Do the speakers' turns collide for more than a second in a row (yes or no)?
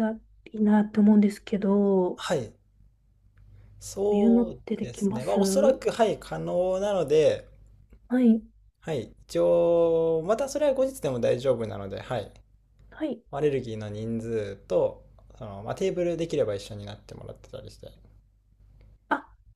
yes